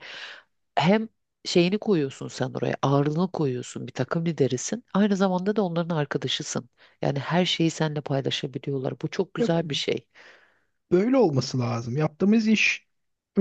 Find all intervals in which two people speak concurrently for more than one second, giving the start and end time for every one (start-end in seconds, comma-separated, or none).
none